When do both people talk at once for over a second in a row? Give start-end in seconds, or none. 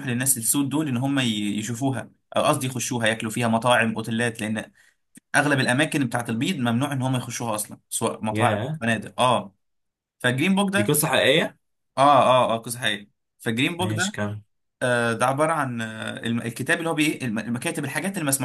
none